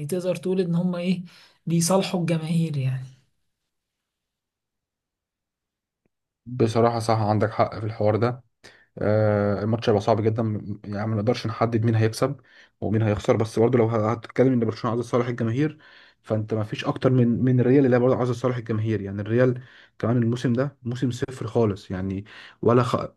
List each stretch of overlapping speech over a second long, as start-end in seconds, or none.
none